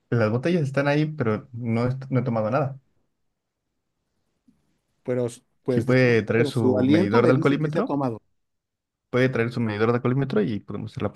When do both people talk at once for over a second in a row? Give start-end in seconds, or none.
5.7-8.0